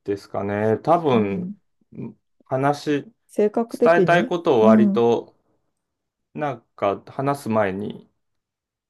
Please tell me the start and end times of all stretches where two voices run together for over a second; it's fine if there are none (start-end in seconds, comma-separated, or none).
3.7-5.0